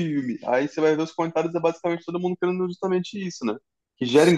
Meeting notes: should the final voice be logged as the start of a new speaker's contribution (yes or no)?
no